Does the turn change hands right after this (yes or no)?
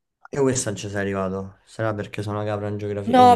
yes